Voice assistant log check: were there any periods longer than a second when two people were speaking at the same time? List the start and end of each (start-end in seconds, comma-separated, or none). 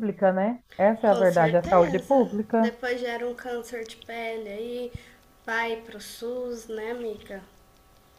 1.0-2.7